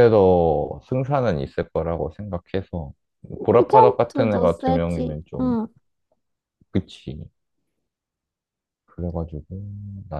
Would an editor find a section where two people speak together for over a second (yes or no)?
yes